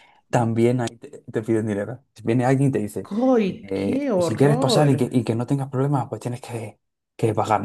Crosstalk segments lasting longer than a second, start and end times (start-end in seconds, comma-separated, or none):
3.6-4.9